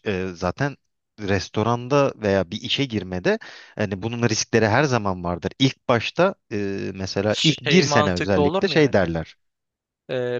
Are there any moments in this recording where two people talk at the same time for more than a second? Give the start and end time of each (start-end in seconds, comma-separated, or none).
7.3-9.1